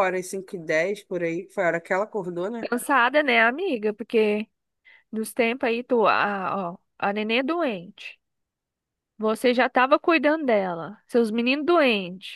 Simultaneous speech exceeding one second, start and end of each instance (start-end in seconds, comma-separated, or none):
none